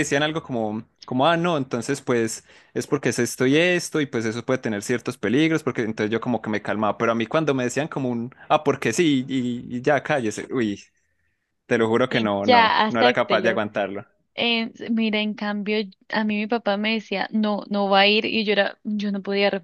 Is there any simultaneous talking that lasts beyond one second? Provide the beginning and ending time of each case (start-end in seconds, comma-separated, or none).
12.1-13.6